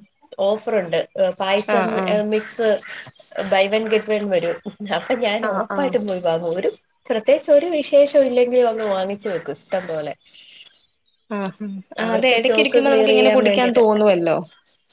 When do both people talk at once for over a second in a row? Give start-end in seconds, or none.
12.1-13.8